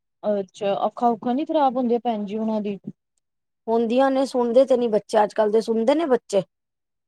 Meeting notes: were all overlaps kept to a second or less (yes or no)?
yes